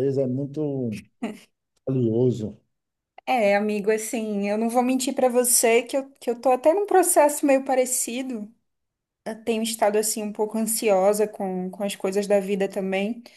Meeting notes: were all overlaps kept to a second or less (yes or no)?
yes